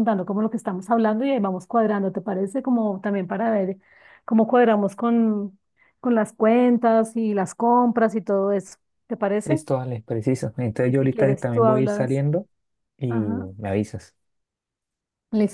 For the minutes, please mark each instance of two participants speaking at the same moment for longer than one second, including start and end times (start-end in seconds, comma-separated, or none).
10.8-12.2